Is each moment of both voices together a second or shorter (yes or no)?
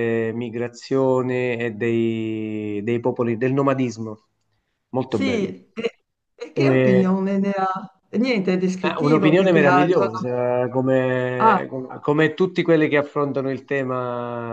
no